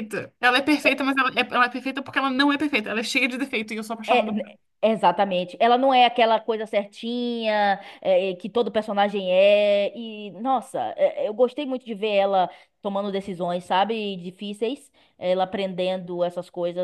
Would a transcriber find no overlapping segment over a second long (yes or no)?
yes